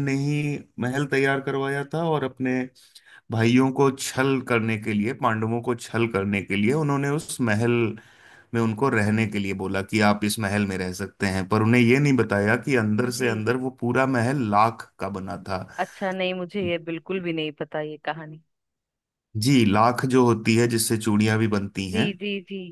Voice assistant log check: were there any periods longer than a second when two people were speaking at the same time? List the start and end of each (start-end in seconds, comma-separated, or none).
none